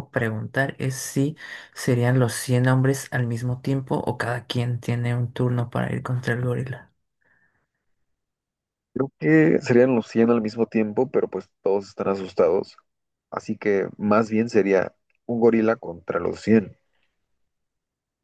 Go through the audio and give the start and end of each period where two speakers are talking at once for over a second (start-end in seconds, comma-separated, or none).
none